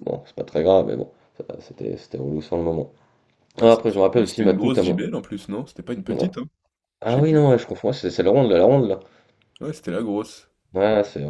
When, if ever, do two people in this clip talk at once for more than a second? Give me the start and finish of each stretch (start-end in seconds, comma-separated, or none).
3.6-5.0